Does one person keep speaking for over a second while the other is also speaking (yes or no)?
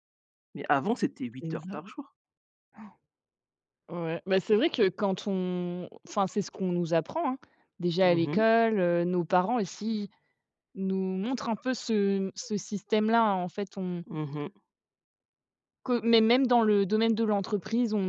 no